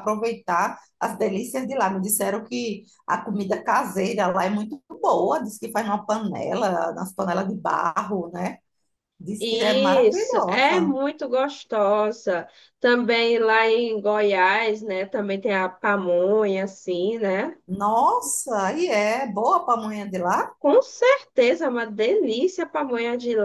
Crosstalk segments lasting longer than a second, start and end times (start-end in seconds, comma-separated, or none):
9.4-10.9